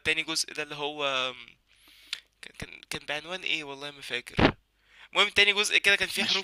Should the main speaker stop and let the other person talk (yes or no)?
no